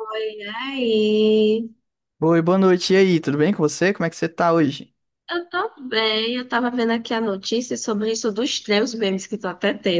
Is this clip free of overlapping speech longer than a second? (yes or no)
yes